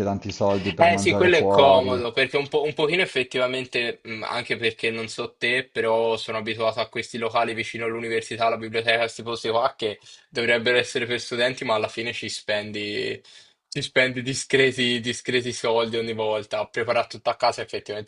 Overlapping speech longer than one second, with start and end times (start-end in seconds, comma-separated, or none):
0.8-2.0